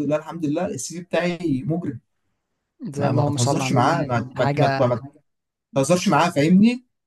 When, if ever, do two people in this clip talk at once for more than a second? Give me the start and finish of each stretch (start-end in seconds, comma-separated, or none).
3.0-4.9